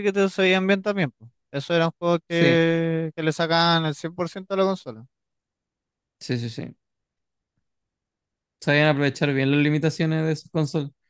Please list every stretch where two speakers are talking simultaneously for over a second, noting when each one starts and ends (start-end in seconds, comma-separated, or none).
none